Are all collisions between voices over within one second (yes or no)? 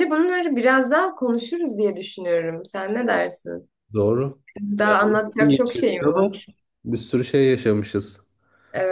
no